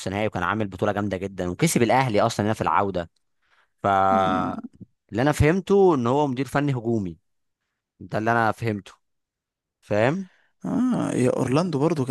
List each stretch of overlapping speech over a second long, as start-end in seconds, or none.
none